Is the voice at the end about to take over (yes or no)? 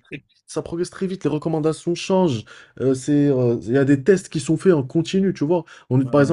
no